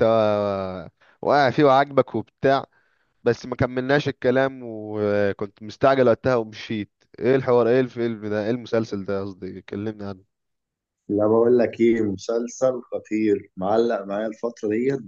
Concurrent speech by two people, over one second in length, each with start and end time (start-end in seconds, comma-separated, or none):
none